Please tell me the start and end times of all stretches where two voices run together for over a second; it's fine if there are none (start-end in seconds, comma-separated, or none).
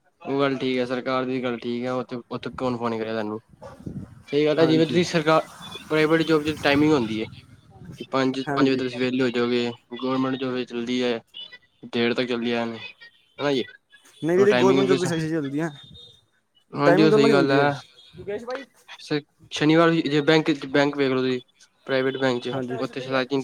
none